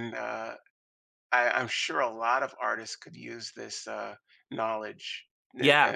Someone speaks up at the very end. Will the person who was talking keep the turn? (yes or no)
no